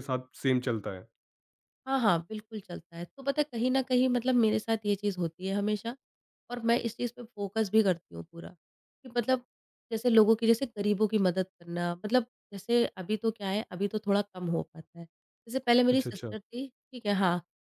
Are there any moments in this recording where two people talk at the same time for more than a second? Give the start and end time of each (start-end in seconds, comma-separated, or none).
none